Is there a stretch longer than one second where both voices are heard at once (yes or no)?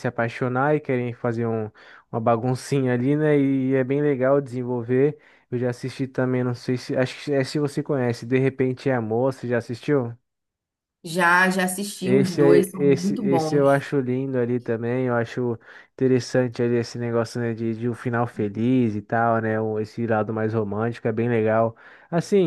yes